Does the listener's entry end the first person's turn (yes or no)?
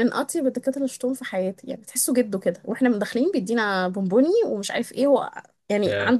no